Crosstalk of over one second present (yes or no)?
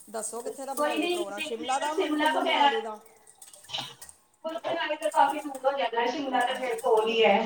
yes